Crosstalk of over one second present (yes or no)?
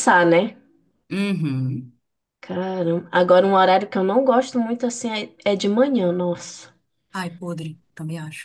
no